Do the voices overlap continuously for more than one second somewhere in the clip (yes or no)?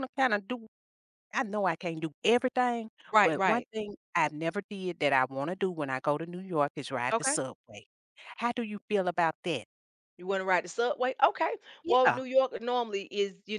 no